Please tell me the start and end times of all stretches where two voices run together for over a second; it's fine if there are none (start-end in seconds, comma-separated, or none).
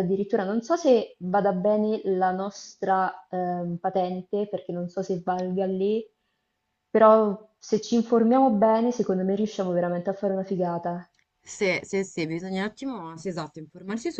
none